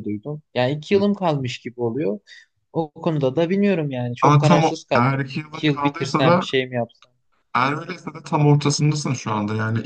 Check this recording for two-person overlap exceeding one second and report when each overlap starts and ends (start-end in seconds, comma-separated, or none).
4.2-6.5